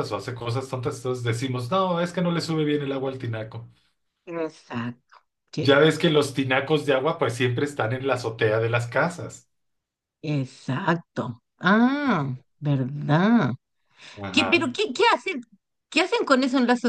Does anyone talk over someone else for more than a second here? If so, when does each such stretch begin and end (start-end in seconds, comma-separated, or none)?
none